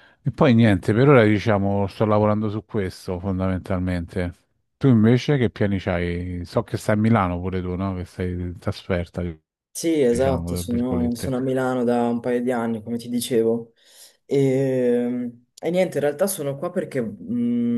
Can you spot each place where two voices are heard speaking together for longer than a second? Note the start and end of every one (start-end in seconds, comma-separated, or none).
10.1-11.3